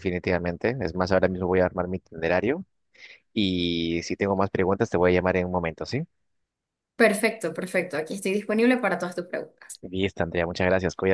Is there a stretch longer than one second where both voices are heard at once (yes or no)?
no